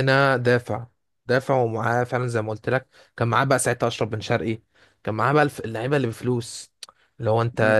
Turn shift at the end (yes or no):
no